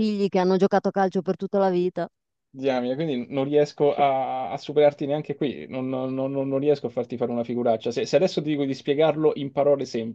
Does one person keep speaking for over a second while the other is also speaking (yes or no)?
no